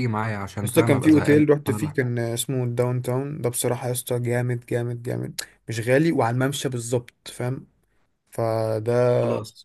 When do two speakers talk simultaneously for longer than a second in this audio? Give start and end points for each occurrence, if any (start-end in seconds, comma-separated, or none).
0.6-2.0